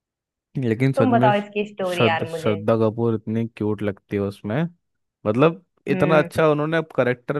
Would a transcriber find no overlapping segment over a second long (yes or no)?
no